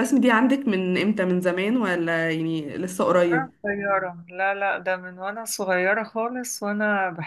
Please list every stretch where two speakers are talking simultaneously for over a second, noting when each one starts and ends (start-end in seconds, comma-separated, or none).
none